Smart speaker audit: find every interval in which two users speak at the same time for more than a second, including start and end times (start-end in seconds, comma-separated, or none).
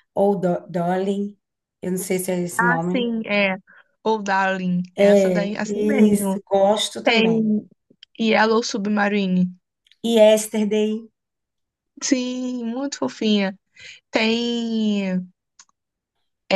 5.0-6.4